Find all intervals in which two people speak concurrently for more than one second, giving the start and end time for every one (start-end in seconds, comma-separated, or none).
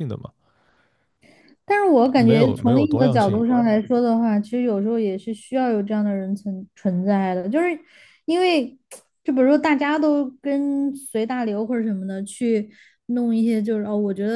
2.2-3.4